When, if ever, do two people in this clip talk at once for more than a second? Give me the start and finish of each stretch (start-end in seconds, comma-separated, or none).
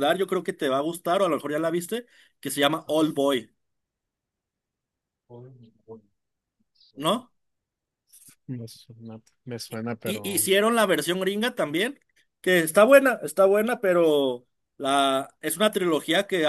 none